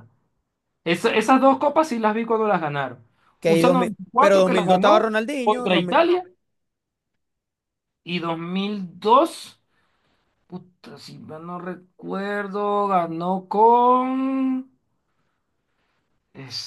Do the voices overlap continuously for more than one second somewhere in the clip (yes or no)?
yes